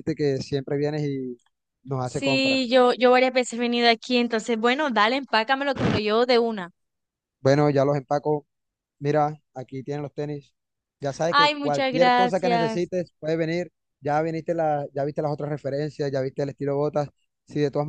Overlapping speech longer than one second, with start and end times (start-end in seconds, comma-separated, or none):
11.3-12.9